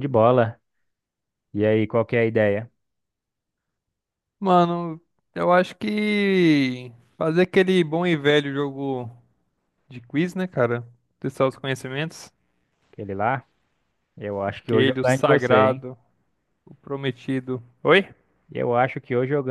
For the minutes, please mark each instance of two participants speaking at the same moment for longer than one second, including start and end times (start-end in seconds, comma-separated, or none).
14.5-15.9